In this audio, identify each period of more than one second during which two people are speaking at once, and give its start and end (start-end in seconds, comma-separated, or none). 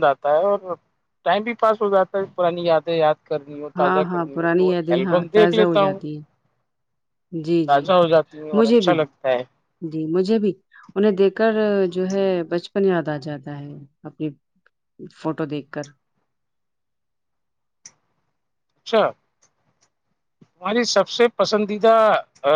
3.8-6.0